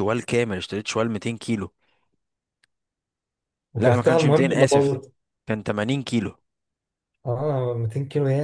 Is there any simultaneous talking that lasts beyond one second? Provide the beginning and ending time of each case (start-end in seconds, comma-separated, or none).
3.8-5.0